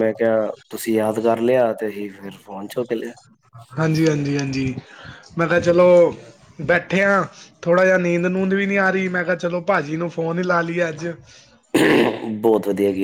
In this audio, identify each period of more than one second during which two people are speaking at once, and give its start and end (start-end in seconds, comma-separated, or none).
none